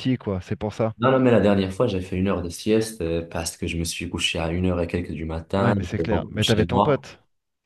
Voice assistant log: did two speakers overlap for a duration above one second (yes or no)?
yes